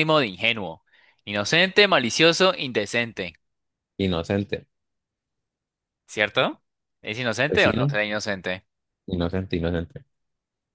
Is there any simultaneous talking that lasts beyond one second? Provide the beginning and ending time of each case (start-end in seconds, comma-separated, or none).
none